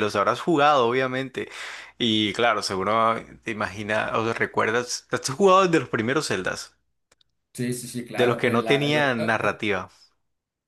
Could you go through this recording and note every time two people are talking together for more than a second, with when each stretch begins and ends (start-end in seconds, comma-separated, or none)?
8.2-9.6